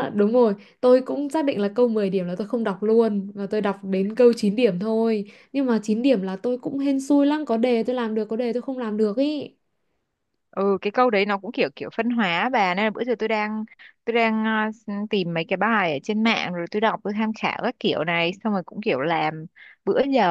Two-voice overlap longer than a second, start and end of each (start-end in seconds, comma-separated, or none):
none